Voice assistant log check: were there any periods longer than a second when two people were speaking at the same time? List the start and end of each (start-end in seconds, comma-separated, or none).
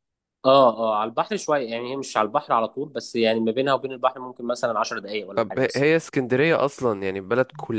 none